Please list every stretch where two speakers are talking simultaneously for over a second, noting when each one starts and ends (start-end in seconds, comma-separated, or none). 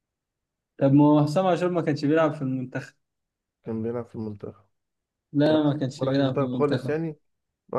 5.5-7.0